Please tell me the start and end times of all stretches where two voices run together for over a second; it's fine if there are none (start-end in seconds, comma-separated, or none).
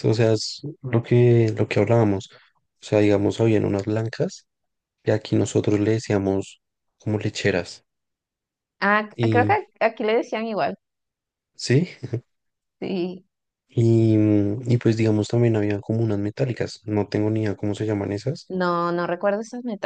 none